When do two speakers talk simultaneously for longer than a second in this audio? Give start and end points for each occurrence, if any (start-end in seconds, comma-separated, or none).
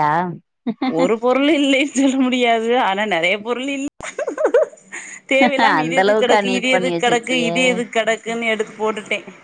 5.8-7.5